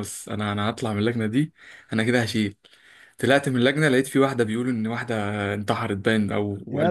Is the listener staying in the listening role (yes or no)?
yes